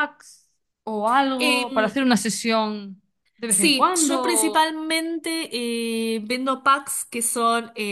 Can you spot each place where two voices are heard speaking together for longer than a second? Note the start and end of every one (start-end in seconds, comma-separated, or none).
3.5-4.7